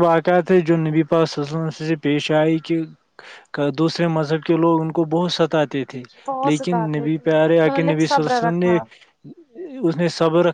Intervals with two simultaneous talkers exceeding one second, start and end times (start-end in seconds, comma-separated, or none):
6.4-8.8